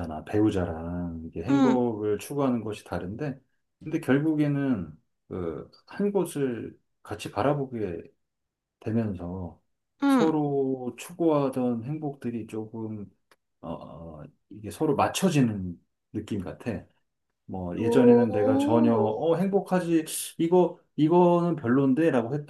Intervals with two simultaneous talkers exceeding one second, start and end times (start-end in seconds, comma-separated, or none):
17.8-19.2